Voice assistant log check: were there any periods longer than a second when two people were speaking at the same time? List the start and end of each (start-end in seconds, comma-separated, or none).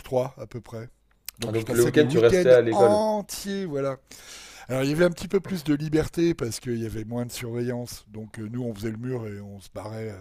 1.4-3.0